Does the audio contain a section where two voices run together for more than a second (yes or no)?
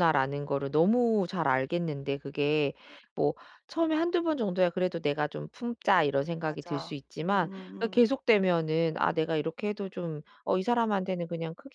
yes